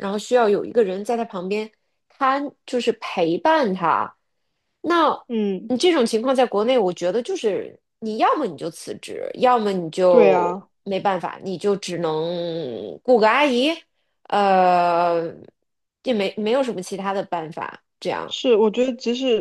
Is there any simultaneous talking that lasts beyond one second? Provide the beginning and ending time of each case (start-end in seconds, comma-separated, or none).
none